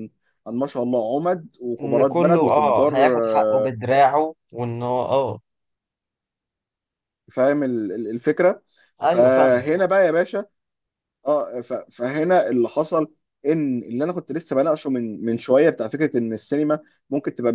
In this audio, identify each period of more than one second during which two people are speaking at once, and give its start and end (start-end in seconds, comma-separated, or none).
1.8-3.7